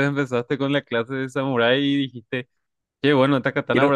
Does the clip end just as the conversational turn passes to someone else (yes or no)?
no